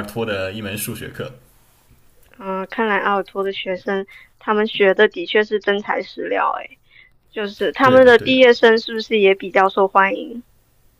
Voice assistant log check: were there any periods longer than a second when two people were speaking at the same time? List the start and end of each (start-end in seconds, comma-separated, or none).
none